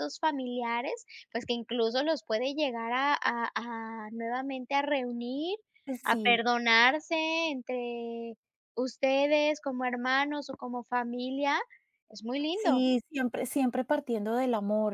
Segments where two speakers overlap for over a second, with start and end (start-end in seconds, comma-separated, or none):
none